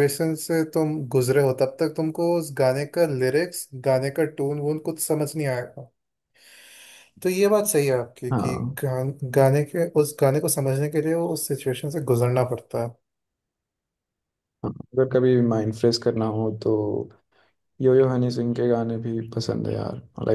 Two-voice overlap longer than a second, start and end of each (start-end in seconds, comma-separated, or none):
none